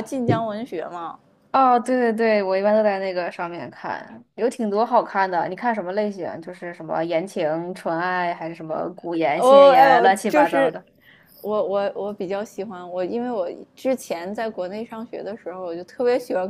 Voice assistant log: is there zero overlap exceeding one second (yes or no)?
no